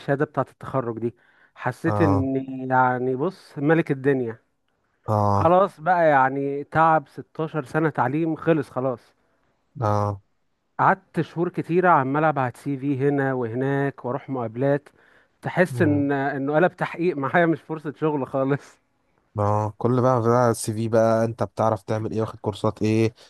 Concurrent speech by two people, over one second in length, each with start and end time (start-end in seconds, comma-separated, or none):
none